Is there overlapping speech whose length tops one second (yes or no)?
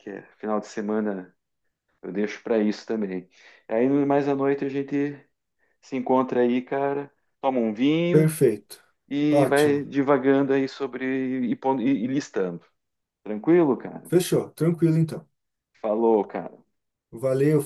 no